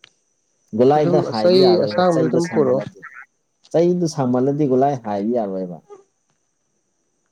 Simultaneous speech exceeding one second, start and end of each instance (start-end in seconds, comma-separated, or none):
0.9-2.8